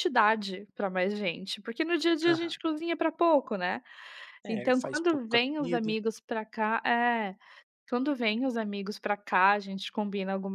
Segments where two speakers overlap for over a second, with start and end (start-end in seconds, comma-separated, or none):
4.5-6.0